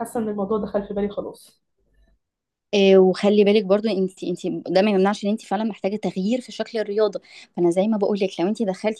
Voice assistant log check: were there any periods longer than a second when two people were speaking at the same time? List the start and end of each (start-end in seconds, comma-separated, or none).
none